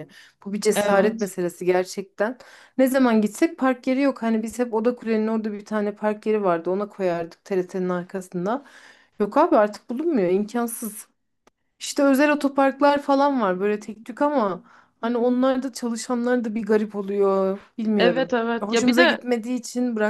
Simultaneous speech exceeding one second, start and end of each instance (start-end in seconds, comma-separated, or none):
18.0-19.2